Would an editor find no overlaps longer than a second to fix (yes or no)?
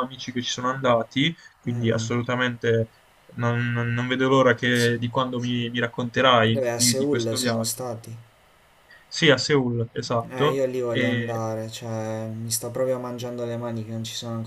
no